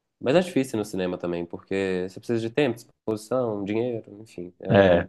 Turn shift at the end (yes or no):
no